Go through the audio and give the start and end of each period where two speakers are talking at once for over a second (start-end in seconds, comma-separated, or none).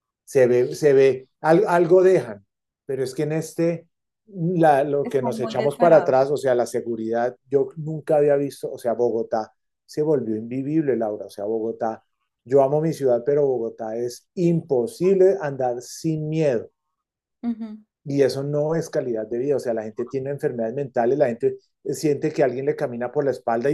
5.0-6.3